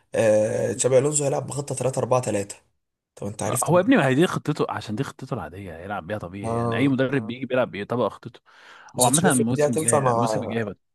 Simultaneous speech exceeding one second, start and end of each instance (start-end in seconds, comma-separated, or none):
9.0-10.3